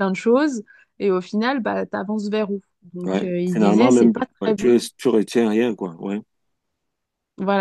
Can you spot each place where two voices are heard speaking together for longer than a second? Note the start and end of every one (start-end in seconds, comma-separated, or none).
3.0-4.8